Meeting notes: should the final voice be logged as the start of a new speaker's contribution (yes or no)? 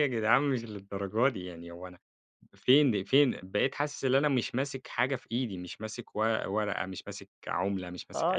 yes